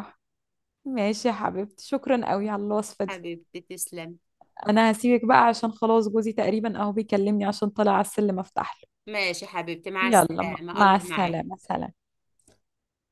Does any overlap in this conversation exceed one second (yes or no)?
yes